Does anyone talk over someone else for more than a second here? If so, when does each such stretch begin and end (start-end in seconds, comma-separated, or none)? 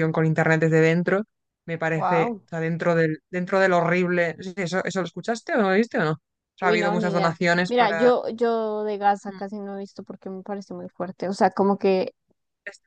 6.6-8.1